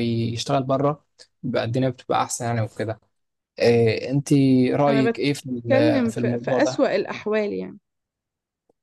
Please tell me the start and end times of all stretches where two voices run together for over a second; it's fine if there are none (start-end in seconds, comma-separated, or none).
4.9-6.9